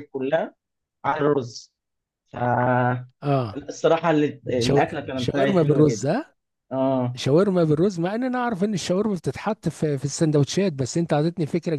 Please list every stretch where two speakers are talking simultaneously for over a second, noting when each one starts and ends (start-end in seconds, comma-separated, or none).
4.6-6.1